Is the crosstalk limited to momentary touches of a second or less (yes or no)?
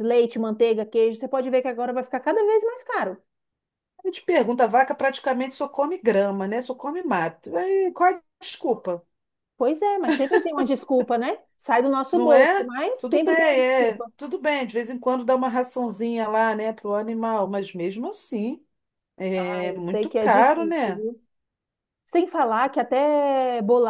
no